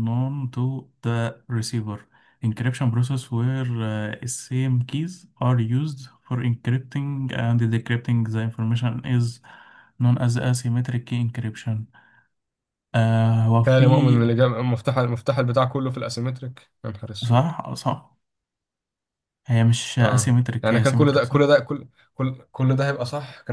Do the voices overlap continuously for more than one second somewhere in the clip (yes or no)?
yes